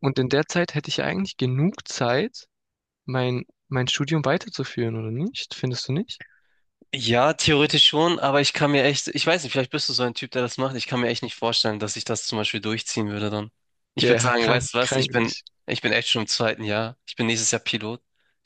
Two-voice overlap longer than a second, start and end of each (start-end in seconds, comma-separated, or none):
14.0-15.5